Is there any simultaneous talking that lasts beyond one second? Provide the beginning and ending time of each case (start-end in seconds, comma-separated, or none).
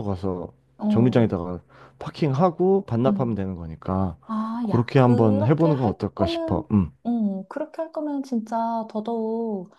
4.6-6.7